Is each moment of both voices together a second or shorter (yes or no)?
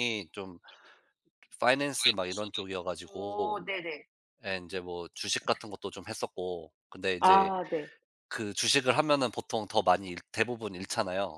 yes